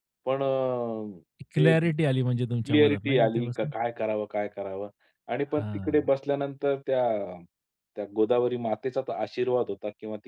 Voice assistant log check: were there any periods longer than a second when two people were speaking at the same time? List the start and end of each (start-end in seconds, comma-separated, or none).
2.4-3.7